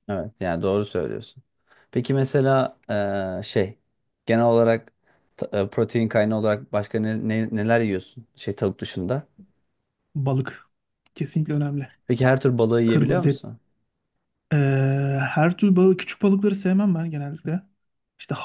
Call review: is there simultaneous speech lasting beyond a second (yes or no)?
no